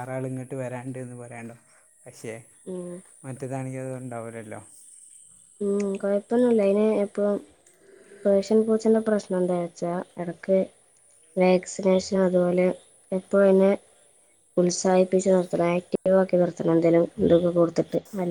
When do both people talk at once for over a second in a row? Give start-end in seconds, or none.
none